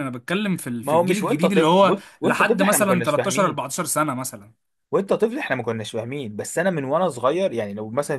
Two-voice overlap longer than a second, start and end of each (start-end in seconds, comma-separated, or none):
0.8-3.6